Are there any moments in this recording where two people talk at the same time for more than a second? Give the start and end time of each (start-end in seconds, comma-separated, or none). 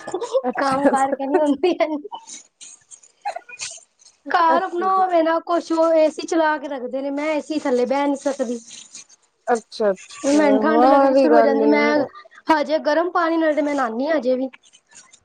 10.3-11.7